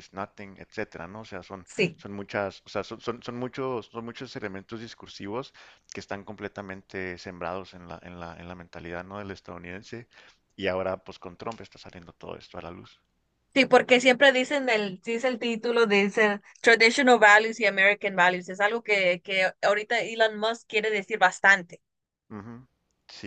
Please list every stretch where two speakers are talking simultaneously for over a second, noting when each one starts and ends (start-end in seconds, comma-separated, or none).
none